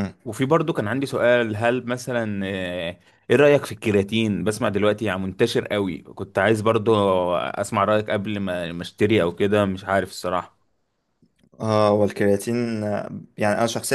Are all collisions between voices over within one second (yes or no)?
yes